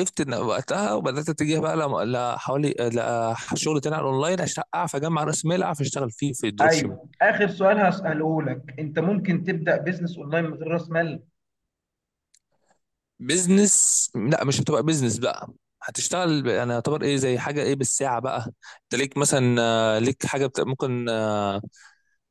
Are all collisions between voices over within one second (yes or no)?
yes